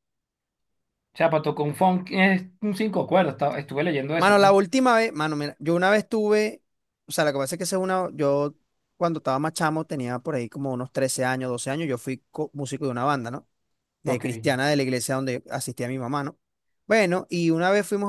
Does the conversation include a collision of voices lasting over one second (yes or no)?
no